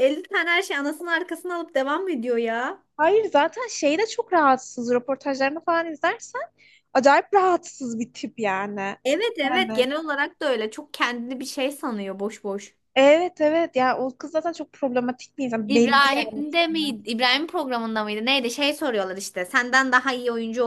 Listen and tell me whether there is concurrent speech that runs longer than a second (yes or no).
yes